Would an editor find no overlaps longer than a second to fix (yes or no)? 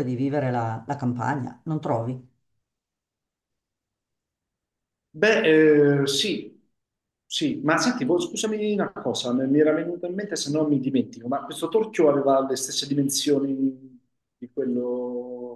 yes